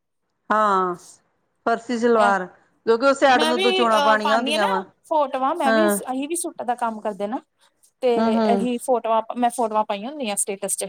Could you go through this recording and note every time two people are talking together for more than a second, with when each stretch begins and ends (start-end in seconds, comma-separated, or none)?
none